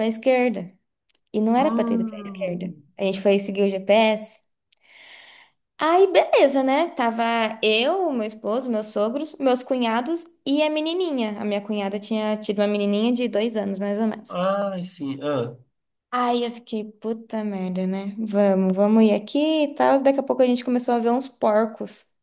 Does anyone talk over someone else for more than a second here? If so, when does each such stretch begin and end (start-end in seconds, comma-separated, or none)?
1.6-2.8